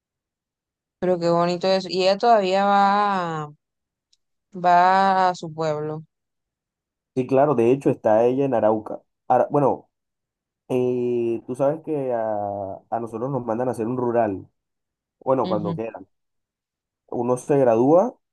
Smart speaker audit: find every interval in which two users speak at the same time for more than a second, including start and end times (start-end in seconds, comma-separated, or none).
none